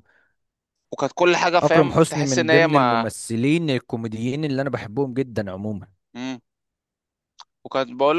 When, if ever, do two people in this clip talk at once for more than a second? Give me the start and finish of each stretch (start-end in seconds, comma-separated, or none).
1.6-3.1